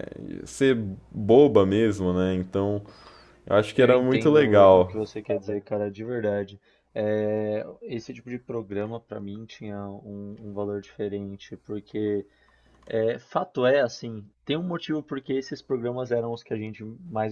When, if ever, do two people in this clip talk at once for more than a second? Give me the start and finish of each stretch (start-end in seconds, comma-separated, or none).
3.7-5.0